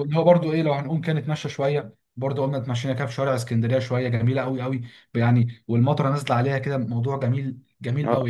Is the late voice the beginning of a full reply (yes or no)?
yes